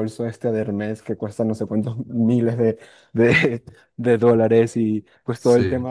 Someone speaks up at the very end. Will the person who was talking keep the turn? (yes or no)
yes